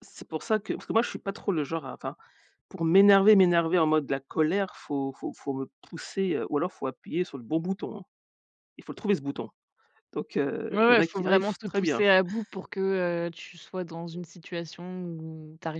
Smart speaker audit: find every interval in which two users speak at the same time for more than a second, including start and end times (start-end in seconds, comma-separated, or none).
10.7-12.0